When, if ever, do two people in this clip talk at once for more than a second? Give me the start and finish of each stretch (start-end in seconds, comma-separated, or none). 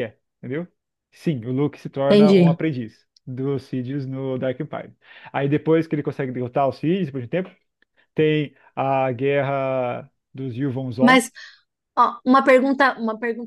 none